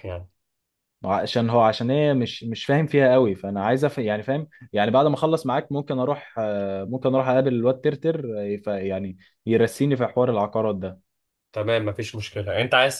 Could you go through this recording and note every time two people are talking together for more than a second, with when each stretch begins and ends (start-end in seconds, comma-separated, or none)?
none